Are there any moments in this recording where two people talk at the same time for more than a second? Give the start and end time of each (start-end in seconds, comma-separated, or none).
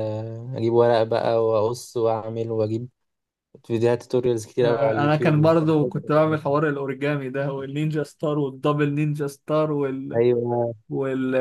4.6-6.1